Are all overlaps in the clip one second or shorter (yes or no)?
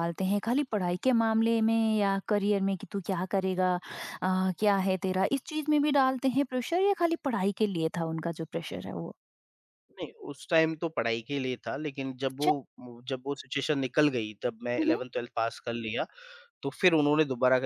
yes